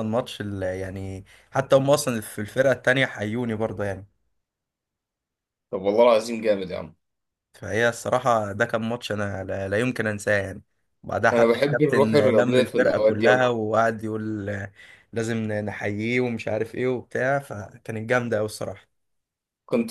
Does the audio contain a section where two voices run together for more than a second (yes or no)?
yes